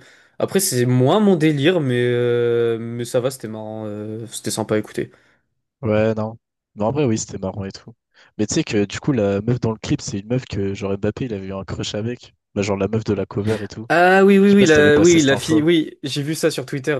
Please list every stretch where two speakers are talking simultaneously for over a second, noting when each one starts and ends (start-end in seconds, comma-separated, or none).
14.4-15.6